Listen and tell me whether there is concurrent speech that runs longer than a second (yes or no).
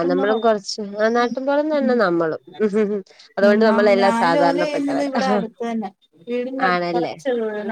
yes